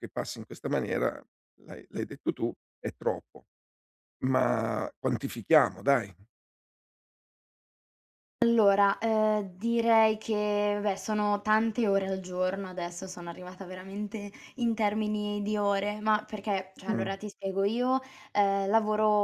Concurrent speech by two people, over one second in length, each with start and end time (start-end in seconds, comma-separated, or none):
none